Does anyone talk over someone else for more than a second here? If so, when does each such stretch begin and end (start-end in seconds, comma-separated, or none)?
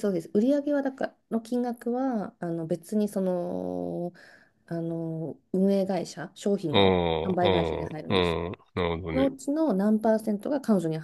6.7-8.4